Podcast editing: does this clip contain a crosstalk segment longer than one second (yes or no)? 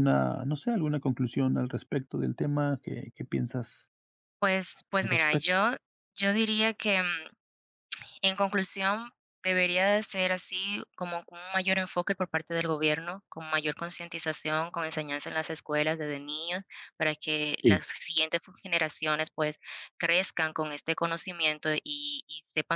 no